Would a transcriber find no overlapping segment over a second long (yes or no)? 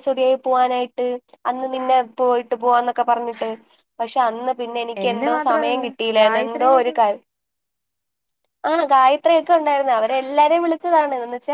no